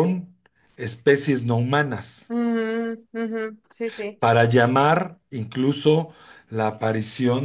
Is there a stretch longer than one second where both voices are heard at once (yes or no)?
no